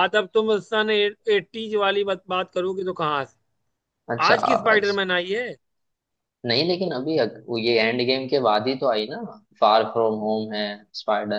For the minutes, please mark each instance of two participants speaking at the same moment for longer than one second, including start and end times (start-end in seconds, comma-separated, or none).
none